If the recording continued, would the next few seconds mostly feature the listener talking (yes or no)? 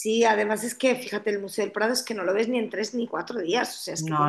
no